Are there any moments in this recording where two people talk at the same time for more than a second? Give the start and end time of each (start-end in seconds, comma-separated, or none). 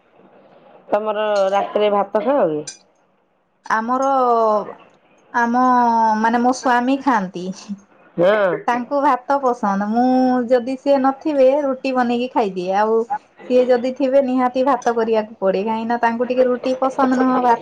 none